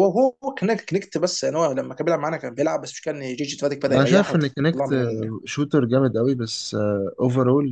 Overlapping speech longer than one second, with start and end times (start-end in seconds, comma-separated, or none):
3.9-5.3